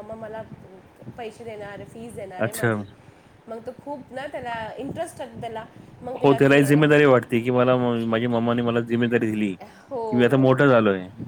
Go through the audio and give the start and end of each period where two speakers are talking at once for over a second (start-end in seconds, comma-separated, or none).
none